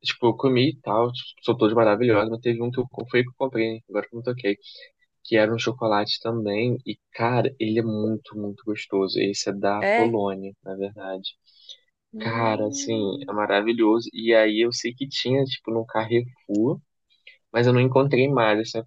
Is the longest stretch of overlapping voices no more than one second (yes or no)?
no